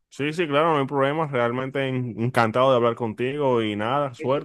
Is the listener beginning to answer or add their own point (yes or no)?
yes